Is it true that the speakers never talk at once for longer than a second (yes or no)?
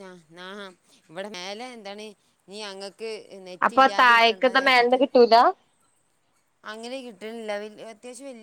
no